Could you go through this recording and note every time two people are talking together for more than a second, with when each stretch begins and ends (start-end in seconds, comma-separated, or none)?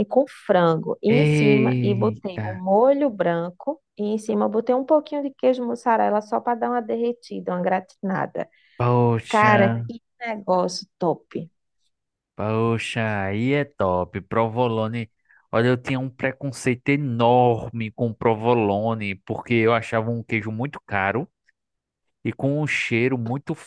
1.1-2.5